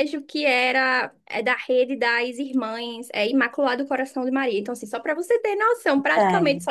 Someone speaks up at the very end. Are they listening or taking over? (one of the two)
listening